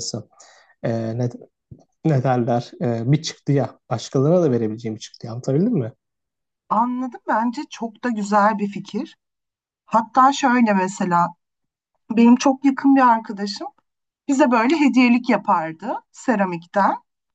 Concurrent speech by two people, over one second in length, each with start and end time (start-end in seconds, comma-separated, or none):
none